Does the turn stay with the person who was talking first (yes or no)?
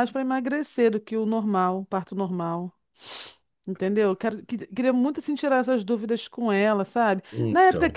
yes